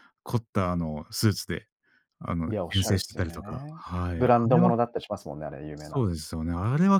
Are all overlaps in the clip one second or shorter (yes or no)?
no